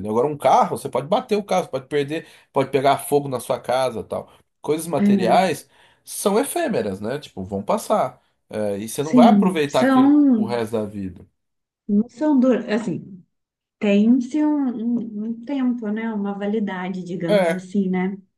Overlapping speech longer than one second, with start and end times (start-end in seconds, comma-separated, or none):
9.0-10.6